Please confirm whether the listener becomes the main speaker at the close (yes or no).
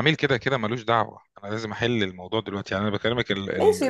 yes